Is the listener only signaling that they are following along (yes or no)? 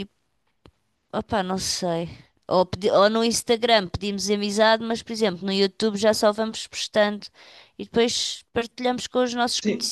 no